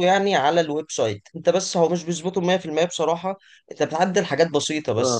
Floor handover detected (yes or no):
no